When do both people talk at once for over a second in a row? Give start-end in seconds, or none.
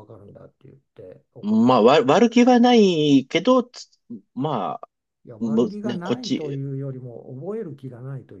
5.4-6.6